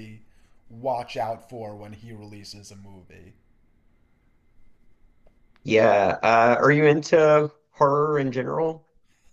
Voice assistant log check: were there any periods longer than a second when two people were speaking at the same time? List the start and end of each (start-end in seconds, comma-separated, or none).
none